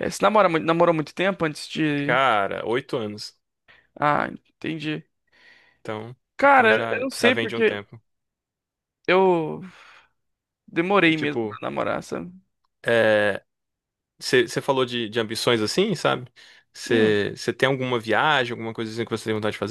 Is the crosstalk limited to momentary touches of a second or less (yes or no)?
no